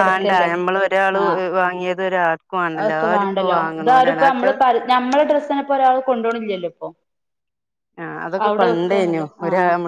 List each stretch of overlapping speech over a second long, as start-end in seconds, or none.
2.9-4.5